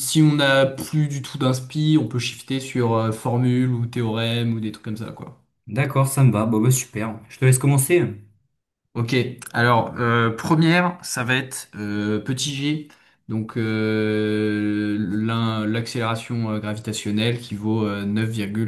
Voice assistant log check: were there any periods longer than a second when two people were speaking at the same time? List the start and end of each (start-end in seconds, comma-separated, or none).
none